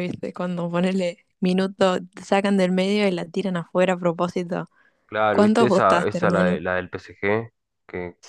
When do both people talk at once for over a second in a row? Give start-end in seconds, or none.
5.3-6.6